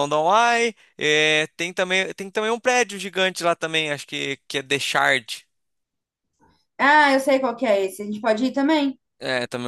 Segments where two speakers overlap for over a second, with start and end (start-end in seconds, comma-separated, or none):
none